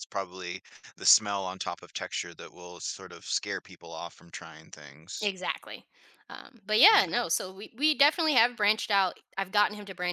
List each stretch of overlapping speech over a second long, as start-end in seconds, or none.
none